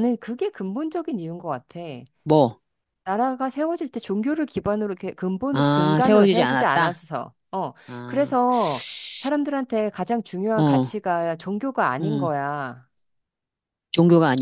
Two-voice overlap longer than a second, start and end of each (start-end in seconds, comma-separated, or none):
5.5-6.9